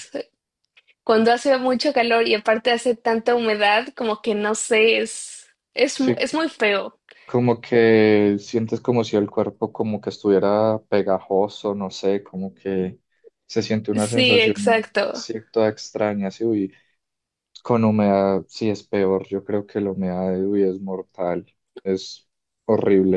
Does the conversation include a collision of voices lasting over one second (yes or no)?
yes